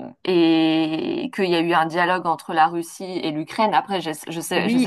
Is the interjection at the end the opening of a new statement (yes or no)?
yes